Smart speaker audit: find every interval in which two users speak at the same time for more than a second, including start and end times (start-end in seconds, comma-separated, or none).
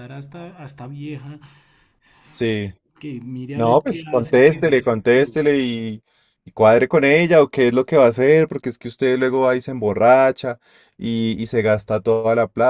3.5-4.8